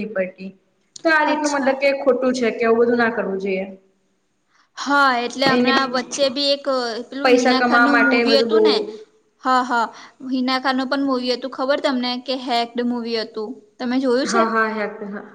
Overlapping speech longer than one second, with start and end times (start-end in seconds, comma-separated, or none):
7.2-8.8